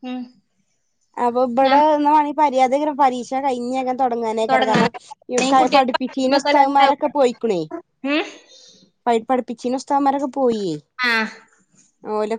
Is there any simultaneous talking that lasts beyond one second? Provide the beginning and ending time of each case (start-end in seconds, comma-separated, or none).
4.5-7.0